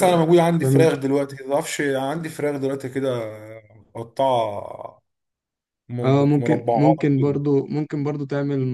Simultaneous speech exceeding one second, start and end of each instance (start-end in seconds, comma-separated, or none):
6.0-7.4